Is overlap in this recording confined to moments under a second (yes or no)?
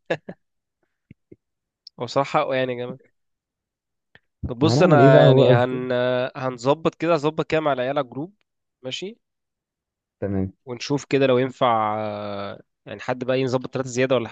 no